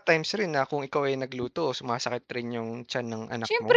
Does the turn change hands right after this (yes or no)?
yes